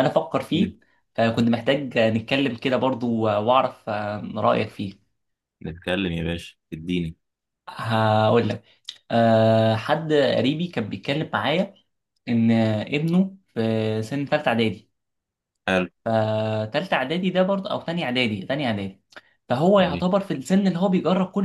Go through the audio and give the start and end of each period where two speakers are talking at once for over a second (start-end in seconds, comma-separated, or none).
none